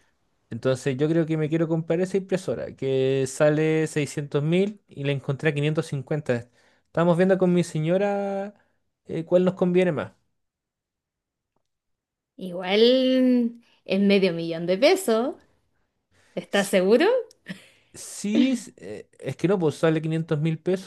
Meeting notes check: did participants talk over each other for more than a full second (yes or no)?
no